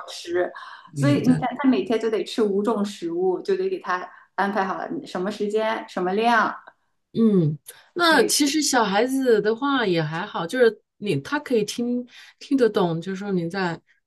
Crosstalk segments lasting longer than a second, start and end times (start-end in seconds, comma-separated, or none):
none